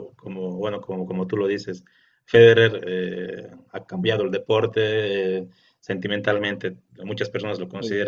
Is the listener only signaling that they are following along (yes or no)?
yes